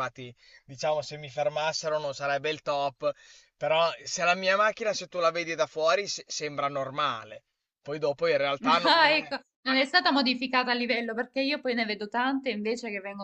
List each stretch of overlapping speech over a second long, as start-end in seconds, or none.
none